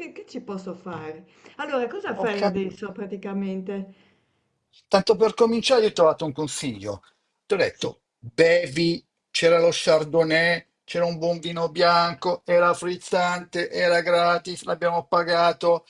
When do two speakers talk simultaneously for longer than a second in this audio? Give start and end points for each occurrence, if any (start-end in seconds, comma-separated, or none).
none